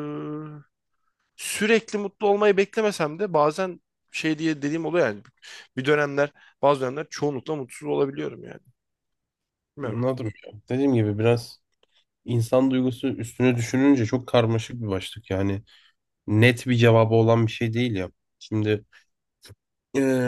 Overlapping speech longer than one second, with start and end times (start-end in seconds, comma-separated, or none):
none